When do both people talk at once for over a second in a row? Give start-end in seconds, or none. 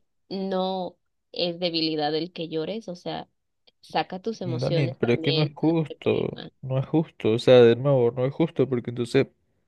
4.4-6.5